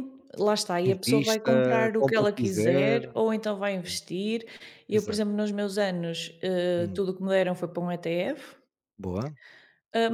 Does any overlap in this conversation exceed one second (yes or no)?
yes